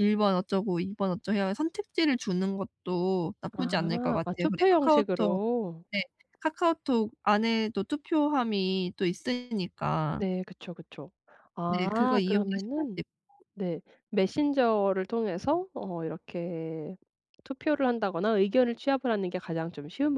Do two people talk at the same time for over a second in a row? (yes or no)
yes